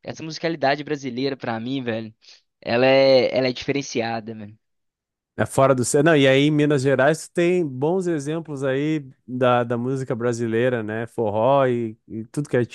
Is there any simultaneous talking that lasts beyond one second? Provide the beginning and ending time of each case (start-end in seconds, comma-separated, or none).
none